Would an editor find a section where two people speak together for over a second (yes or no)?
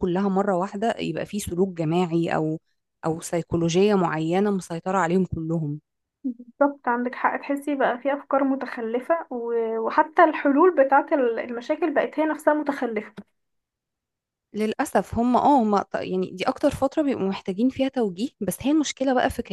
no